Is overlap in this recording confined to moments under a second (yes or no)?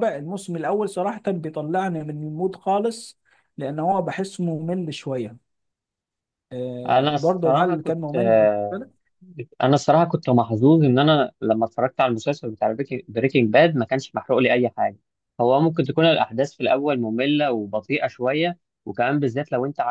no